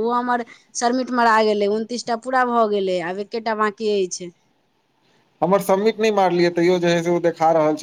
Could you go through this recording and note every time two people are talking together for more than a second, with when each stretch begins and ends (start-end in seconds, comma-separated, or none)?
none